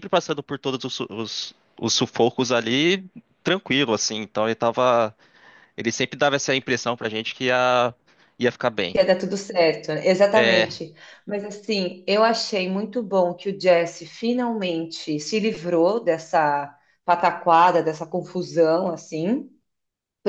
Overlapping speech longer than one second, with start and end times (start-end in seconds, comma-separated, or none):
none